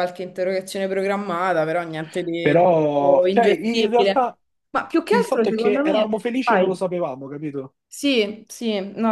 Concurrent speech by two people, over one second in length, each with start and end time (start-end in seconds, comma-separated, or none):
2.4-4.3, 5.1-6.8